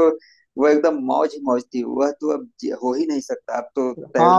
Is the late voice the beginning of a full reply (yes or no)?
yes